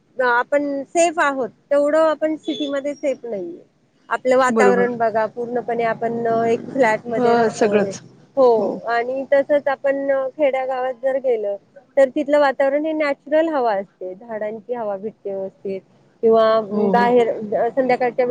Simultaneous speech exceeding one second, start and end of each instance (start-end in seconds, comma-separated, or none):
none